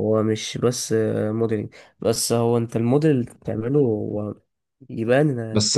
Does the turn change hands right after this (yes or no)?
yes